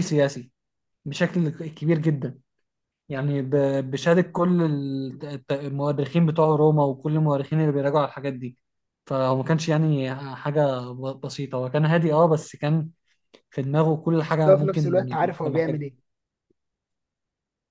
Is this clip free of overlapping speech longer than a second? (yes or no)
no